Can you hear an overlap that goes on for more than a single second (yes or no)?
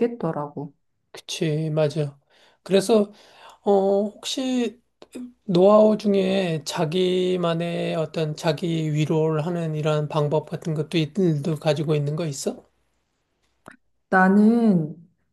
no